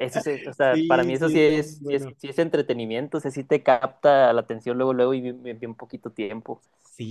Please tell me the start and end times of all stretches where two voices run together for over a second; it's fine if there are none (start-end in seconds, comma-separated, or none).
0.7-2.1